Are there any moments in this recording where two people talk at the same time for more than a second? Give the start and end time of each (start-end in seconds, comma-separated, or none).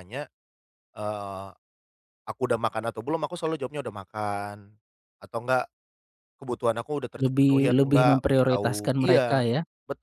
7.2-9.2